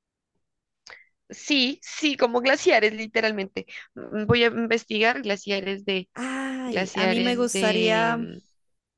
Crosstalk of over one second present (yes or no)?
yes